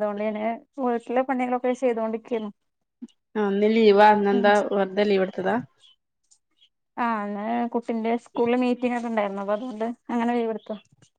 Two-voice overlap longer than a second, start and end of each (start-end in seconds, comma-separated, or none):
none